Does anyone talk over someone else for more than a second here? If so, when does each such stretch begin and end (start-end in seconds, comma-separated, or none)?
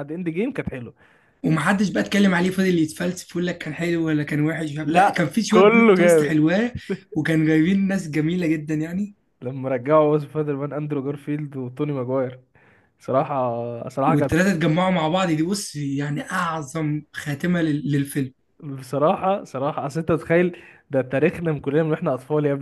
4.8-6.4